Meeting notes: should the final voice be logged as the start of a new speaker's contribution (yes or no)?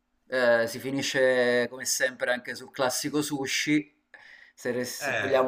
no